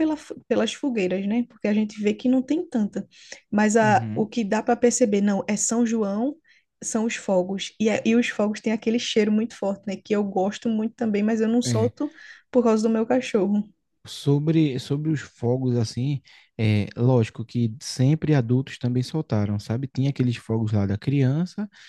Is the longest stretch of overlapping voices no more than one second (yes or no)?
yes